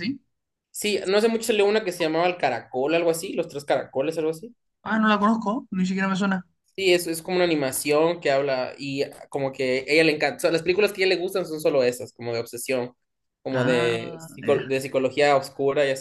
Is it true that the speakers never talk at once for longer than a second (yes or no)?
no